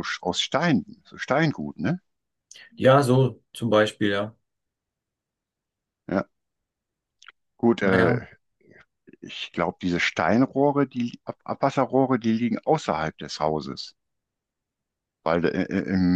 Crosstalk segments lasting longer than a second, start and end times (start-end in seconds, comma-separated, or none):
none